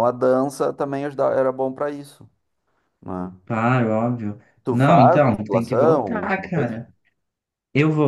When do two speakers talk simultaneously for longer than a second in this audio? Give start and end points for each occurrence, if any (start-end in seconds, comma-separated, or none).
4.6-6.8